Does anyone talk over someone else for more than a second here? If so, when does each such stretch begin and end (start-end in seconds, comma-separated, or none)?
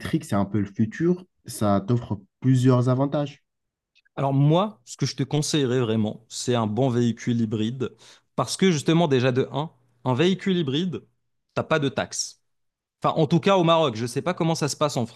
none